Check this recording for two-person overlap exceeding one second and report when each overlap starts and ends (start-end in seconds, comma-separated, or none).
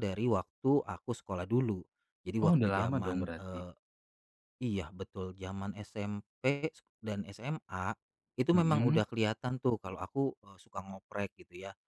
2.4-3.6